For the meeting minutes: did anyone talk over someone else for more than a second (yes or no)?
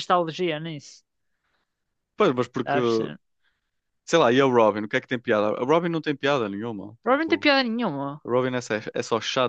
no